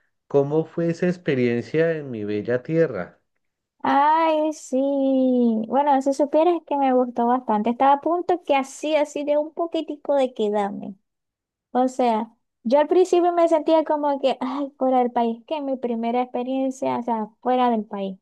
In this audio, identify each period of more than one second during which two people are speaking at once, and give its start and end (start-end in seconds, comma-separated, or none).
none